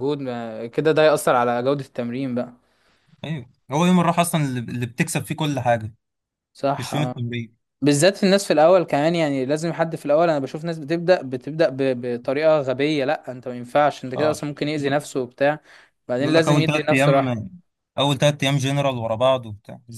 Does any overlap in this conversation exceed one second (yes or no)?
yes